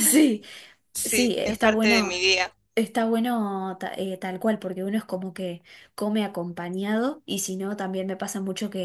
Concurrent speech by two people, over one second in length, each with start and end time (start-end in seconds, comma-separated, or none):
1.0-2.2